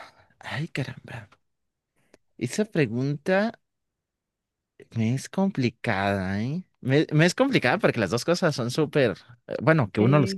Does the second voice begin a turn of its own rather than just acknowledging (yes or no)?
no